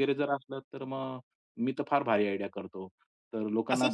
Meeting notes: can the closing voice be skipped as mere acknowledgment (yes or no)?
no